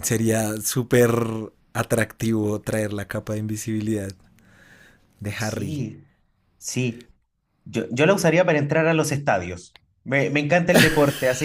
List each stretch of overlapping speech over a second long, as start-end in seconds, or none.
none